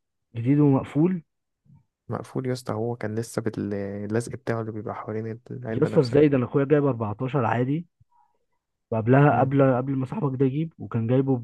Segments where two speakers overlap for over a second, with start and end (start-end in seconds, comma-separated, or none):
none